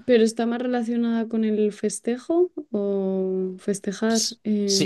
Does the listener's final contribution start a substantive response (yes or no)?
yes